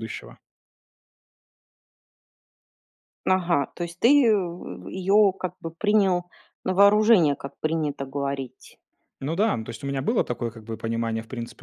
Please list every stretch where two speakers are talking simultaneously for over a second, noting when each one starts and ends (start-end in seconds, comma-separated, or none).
none